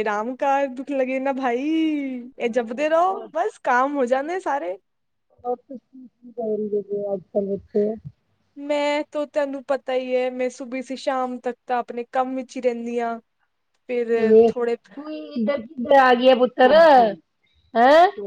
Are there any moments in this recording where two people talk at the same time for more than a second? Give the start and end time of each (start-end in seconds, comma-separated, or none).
none